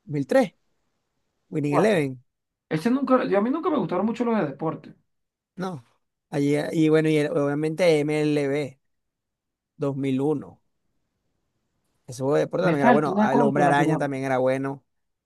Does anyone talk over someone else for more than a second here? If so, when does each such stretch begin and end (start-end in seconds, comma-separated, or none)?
12.7-14.0